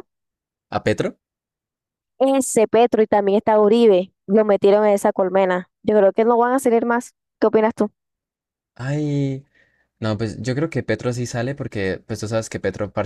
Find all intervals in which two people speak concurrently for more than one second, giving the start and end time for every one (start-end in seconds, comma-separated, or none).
none